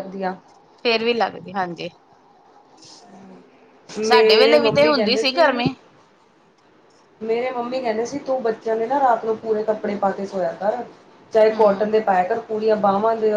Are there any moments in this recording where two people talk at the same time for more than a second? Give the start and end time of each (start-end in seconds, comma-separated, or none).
4.1-5.5